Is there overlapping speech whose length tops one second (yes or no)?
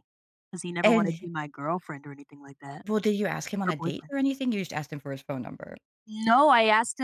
no